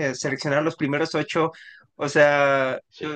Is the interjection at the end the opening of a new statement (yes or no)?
no